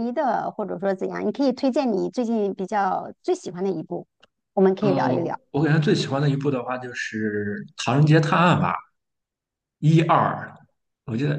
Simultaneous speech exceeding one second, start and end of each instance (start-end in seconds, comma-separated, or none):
none